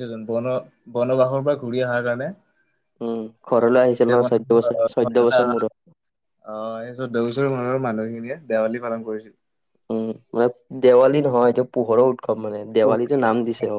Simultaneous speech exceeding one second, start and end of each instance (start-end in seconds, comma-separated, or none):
4.0-5.4